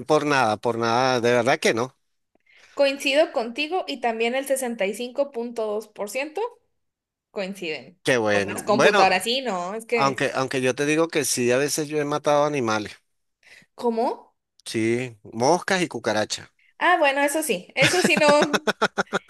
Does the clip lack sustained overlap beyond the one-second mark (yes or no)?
no